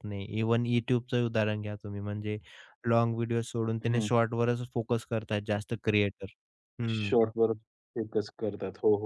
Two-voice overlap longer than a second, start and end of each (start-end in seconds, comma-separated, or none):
none